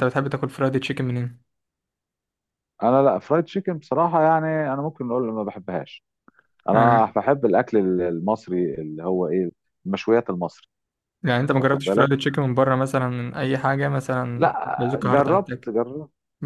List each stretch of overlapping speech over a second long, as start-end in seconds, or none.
14.4-15.7